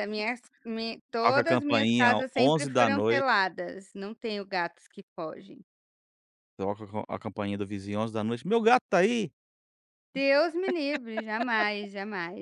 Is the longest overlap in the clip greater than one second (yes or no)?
yes